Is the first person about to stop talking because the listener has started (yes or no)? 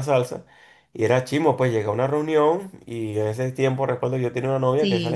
no